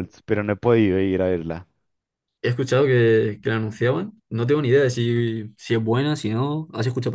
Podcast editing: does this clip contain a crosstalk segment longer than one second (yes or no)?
no